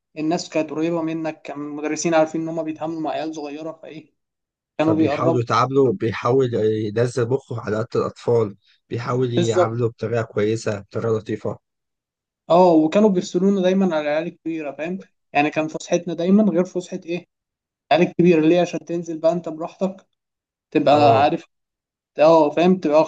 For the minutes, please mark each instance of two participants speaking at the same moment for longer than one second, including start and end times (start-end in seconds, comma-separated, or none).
none